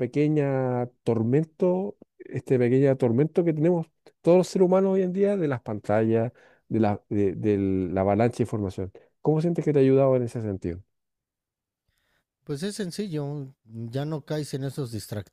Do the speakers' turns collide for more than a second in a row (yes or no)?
no